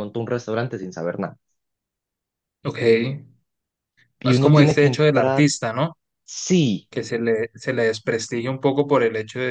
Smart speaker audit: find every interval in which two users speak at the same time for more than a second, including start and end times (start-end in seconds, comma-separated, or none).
4.2-5.5